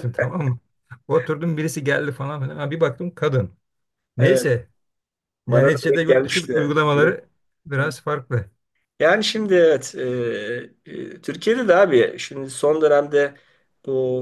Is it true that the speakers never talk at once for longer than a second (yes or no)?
no